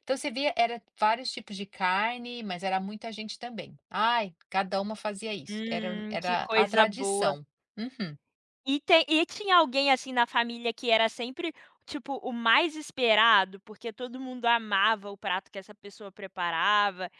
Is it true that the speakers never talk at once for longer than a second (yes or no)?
no